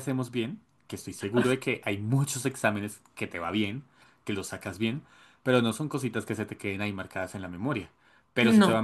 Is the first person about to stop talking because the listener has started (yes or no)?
no